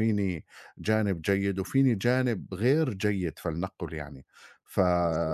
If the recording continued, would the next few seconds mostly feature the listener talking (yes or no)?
no